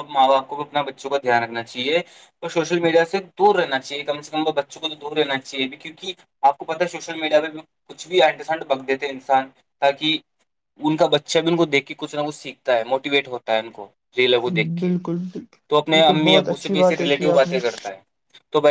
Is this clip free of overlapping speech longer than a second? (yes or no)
no